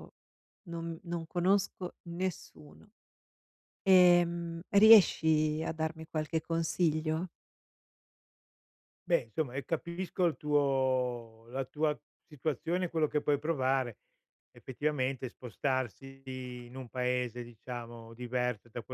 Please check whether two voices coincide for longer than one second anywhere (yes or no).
no